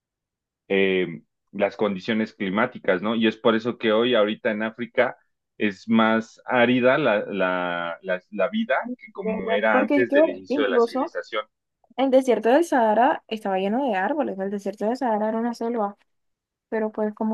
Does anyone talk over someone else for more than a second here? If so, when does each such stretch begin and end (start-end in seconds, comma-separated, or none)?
9.2-11.1